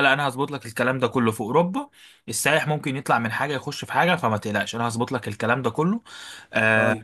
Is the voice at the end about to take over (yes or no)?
no